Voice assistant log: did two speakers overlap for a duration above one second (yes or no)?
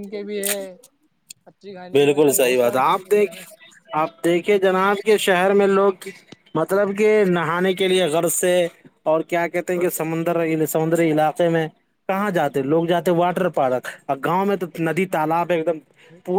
yes